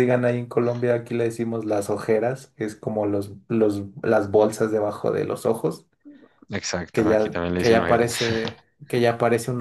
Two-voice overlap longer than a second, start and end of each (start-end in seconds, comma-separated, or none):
6.9-8.2